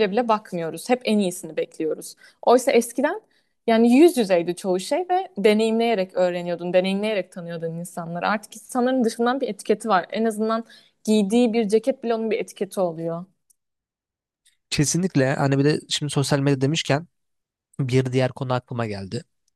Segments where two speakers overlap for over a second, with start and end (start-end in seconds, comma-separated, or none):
none